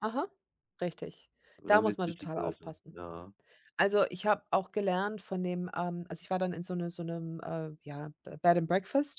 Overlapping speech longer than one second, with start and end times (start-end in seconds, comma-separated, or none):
1.6-3.0